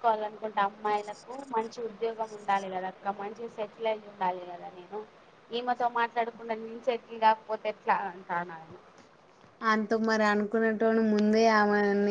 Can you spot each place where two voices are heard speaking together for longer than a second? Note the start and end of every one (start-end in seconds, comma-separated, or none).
none